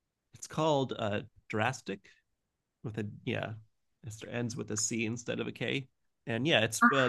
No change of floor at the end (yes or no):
yes